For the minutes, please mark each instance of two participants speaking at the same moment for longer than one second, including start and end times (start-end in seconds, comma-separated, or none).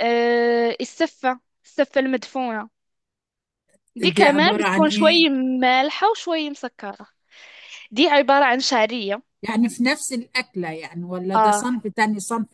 4.0-5.2